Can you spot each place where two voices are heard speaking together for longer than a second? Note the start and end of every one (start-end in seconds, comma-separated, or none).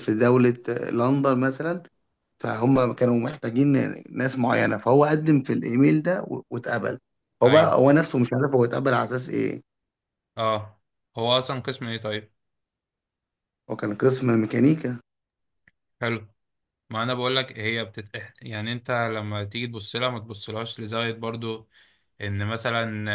none